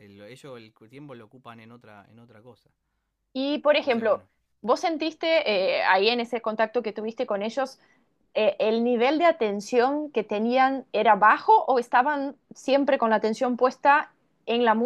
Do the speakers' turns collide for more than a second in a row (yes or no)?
no